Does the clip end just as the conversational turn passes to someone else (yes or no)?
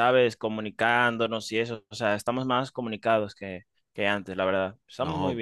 yes